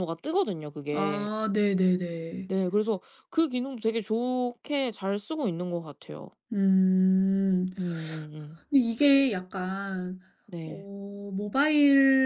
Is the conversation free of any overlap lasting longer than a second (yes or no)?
yes